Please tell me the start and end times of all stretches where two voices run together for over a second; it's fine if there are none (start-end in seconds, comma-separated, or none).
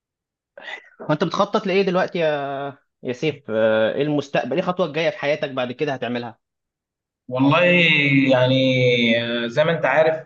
none